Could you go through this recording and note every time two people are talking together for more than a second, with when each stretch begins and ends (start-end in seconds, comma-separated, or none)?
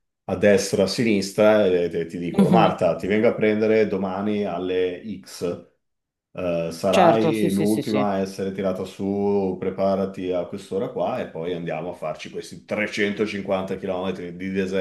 6.9-8.1